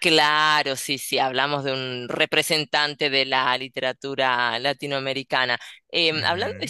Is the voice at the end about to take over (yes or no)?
no